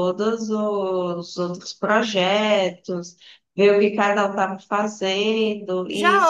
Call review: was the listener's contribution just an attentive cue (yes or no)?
no